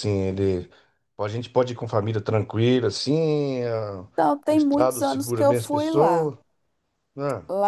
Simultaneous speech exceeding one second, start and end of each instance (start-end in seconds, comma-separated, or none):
4.5-6.3